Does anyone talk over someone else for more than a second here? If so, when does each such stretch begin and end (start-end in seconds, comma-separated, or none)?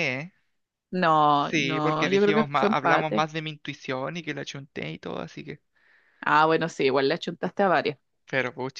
1.4-3.2